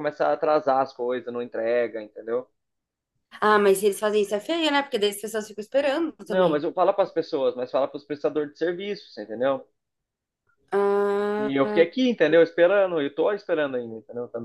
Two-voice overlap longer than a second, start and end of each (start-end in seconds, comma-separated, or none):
none